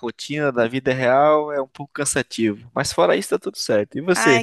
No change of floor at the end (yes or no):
no